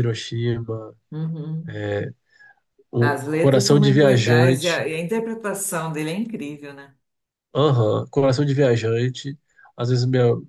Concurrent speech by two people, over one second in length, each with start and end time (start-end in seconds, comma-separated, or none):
3.0-4.9